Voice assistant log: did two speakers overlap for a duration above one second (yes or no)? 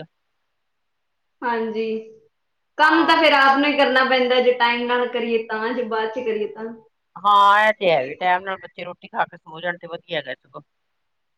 no